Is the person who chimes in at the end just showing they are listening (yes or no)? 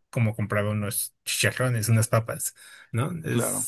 yes